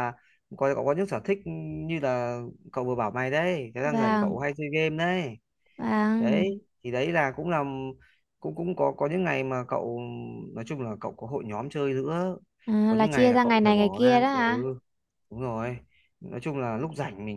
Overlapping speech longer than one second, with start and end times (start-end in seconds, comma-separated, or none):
12.9-14.4